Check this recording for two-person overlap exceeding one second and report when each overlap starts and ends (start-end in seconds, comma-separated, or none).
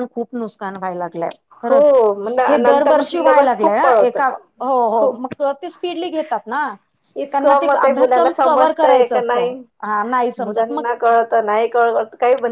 2.5-4.2, 7.3-9.5